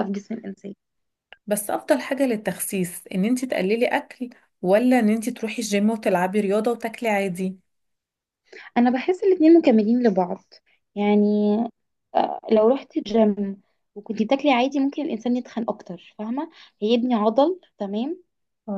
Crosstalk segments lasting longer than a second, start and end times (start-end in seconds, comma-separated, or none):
none